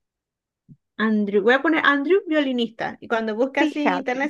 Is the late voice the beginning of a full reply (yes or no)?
no